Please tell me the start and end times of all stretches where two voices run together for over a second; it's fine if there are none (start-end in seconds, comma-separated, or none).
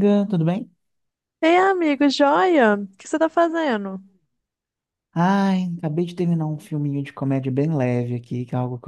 none